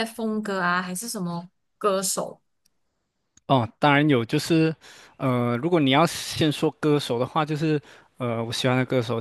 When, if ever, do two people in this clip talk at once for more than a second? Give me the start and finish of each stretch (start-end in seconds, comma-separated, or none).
none